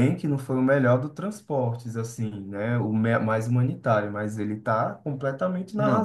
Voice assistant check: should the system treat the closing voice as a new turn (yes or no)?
yes